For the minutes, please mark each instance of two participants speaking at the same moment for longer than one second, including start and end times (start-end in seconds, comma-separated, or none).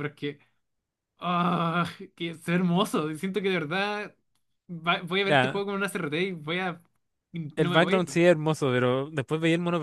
none